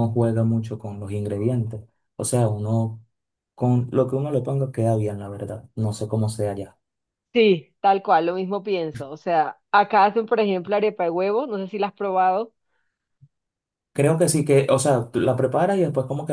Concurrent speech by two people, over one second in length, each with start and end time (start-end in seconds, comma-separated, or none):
none